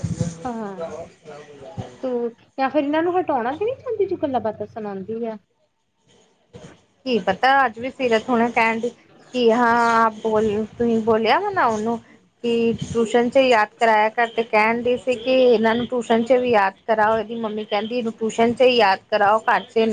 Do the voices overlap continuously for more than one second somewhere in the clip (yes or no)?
no